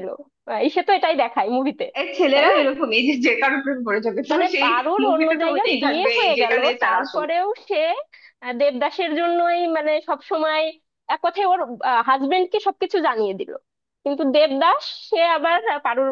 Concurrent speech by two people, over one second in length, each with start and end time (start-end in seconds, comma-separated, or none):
4.3-7.2